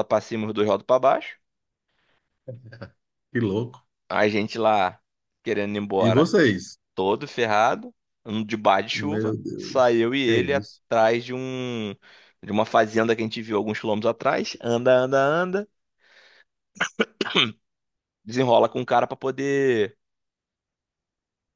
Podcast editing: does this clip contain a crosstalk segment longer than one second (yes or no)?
yes